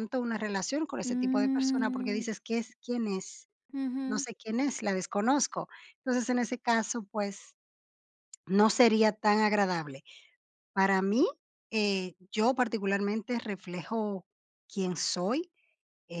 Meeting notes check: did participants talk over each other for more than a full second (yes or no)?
yes